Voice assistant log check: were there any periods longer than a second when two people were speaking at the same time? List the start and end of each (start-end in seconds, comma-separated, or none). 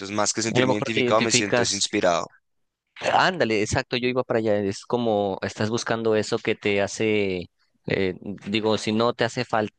0.5-1.8